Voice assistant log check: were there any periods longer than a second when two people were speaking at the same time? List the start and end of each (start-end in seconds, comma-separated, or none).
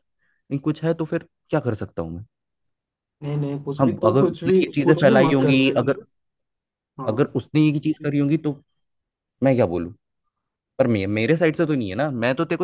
3.8-6.0